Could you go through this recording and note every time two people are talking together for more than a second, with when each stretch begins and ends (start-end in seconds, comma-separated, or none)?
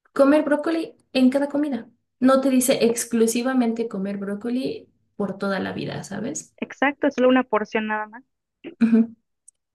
none